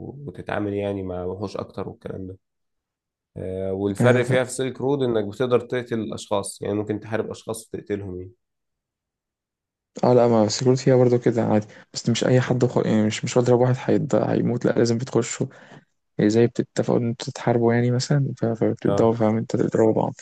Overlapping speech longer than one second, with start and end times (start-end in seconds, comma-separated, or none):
none